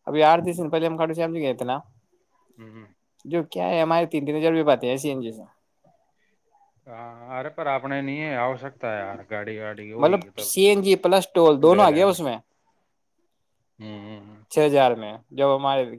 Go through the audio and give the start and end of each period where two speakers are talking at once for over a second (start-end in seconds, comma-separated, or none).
none